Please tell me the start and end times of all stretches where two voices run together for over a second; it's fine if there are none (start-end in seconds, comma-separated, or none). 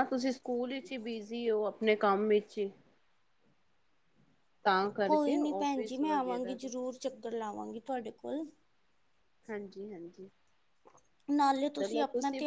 5.1-6.7